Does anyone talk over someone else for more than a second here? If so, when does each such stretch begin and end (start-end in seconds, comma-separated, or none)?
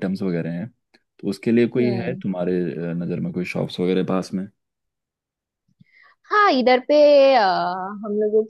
none